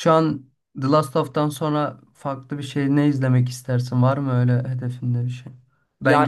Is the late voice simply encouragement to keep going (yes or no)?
yes